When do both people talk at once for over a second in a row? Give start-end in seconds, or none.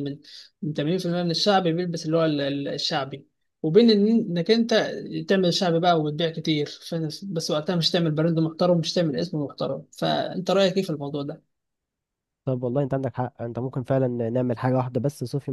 none